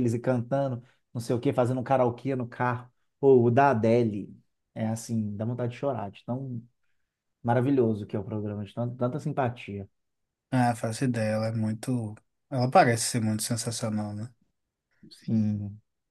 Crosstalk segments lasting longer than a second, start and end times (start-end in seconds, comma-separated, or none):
none